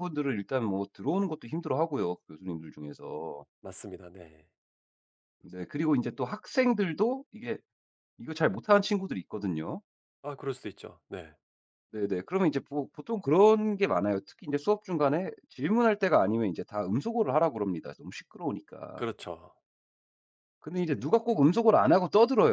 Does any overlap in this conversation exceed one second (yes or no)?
no